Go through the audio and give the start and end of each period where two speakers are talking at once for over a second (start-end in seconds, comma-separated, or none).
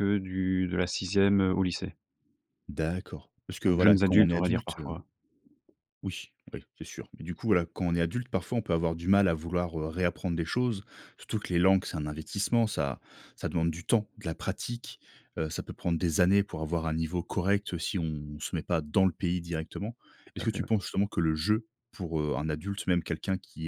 3.6-4.9